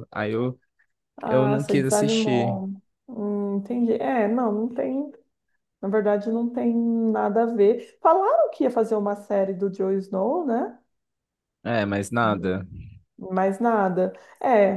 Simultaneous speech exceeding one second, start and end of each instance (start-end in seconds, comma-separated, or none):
1.2-2.6